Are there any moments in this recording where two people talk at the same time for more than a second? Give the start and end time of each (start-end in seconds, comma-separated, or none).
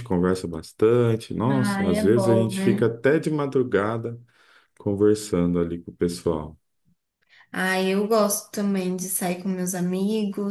1.5-2.9